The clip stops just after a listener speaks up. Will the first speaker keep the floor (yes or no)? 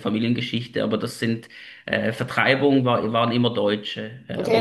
no